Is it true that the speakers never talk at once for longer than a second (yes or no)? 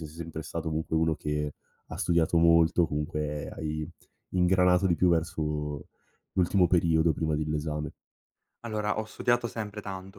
yes